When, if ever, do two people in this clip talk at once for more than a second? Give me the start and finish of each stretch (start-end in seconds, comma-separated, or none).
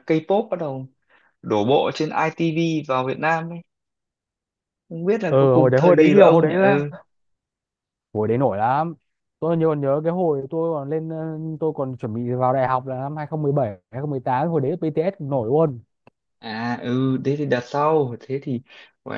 5.3-6.5